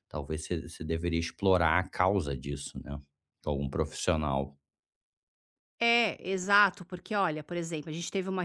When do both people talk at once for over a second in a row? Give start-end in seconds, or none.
none